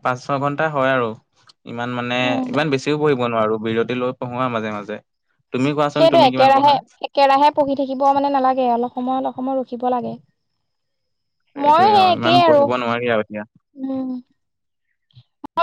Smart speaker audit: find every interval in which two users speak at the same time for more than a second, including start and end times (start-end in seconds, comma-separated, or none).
11.7-13.4